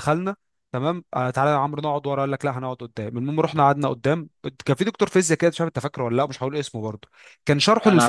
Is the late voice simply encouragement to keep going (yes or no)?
yes